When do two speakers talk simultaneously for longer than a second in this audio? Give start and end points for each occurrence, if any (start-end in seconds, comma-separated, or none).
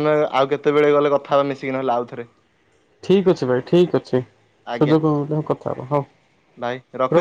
none